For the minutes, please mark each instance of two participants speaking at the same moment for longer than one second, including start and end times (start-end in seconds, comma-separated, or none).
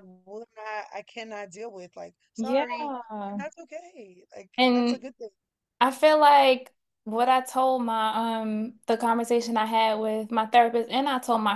none